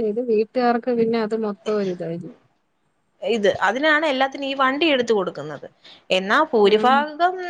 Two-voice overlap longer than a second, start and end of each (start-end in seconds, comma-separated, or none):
none